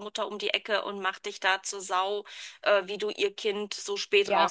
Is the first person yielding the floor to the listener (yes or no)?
yes